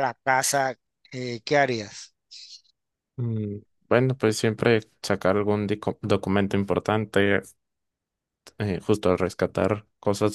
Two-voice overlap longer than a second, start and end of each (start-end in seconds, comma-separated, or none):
none